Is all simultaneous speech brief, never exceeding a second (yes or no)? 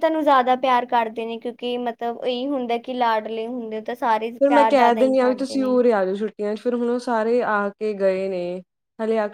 no